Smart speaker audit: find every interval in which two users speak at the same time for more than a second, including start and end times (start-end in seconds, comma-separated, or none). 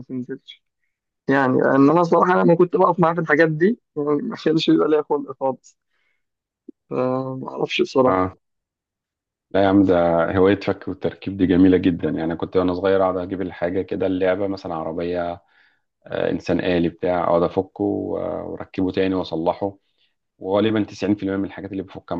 none